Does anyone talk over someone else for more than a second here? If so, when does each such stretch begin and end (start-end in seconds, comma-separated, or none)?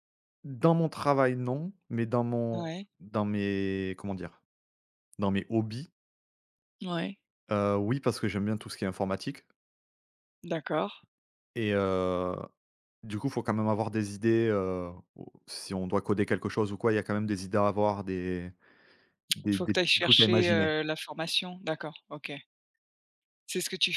19.5-20.7